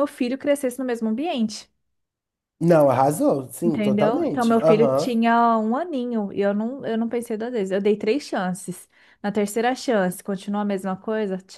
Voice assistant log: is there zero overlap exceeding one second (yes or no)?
no